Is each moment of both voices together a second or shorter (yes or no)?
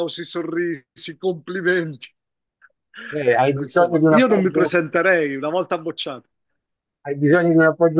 no